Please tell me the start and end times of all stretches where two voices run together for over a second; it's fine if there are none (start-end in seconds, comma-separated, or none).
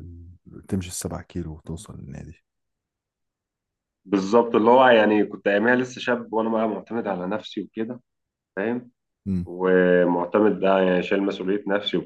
none